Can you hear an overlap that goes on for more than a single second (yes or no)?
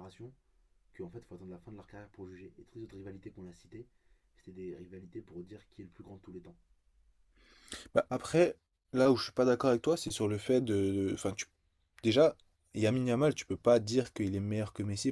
no